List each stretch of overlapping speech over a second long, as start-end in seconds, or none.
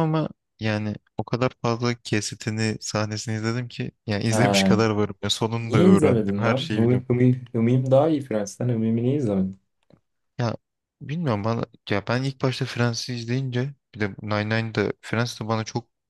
5.6-7.1